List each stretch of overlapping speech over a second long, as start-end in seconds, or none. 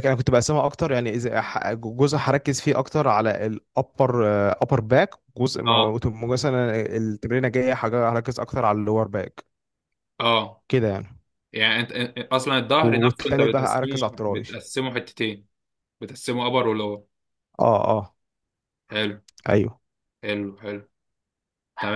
12.8-14.6